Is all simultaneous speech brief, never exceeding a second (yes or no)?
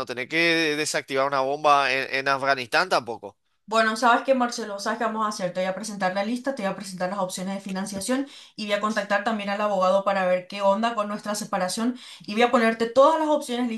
yes